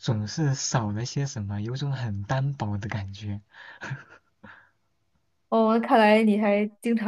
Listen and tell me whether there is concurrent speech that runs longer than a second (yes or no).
no